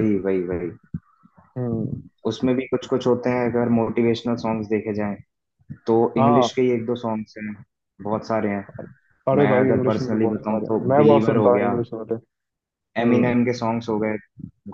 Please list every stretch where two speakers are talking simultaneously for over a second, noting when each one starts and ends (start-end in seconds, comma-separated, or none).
9.4-11.7